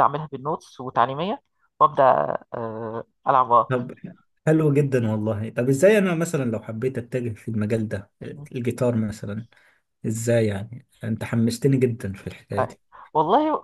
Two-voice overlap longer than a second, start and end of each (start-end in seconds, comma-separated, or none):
none